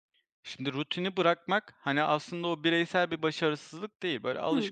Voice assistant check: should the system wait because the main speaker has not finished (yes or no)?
yes